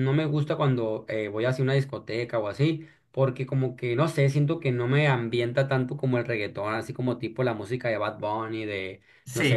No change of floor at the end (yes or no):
yes